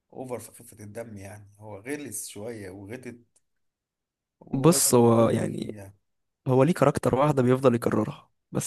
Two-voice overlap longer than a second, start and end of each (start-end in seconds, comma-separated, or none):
4.5-5.8